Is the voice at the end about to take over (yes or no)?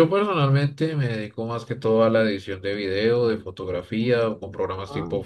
no